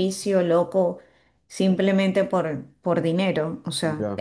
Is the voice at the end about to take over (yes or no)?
no